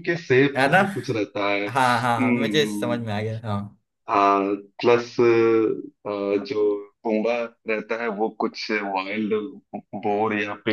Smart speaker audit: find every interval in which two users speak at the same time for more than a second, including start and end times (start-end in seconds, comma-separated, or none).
1.7-3.0